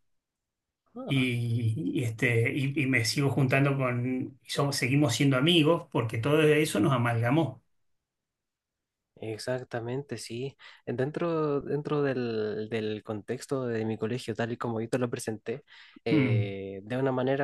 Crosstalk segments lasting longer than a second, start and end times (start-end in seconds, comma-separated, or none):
none